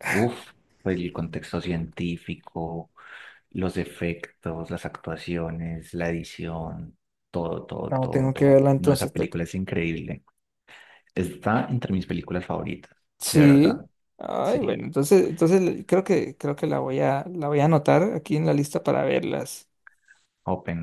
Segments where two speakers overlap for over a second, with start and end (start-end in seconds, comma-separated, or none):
7.9-9.4